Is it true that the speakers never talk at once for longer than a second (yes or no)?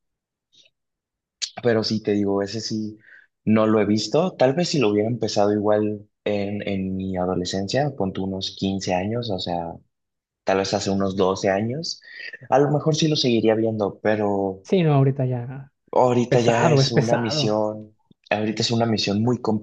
no